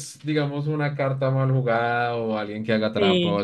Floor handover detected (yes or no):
no